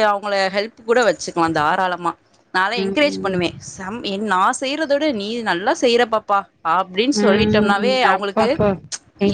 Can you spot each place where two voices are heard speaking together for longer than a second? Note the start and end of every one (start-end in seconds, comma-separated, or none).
7.2-8.5